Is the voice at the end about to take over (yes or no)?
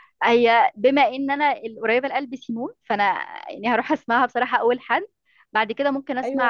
yes